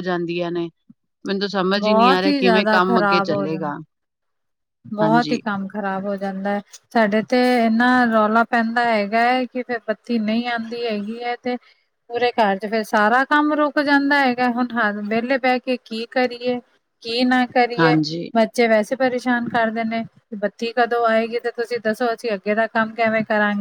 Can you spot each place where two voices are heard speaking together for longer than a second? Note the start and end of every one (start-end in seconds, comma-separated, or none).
1.8-3.7